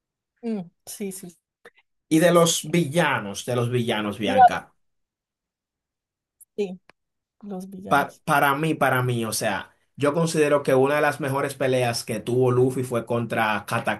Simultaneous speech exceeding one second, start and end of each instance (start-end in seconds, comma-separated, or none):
none